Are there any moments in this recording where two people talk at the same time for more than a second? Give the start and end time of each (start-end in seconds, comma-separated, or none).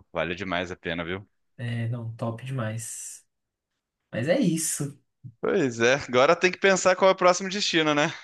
none